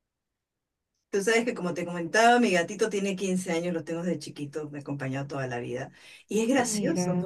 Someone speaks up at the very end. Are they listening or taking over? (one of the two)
listening